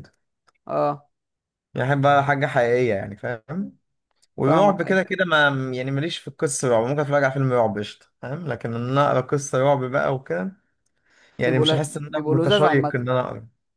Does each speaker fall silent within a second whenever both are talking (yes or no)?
no